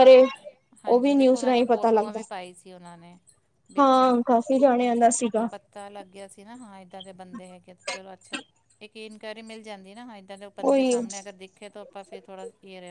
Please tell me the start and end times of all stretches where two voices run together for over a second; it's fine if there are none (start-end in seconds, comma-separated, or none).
0.9-2.2